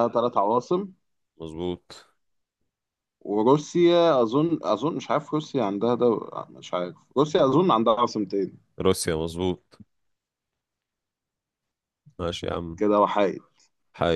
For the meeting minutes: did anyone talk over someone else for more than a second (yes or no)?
no